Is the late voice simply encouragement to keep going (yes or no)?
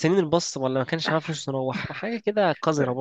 no